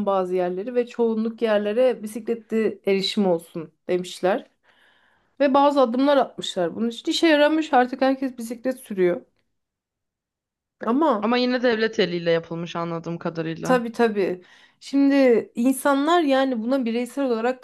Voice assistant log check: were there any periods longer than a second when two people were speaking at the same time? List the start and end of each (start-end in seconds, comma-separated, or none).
none